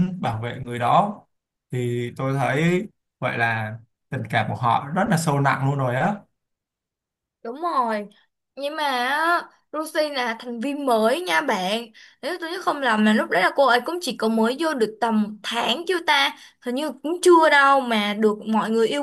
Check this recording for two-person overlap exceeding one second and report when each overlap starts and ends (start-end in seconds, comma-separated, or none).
none